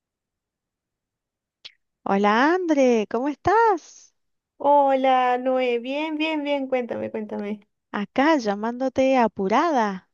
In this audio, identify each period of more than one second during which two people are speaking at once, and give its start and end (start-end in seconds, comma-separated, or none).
none